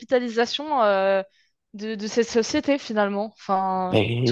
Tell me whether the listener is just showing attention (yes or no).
no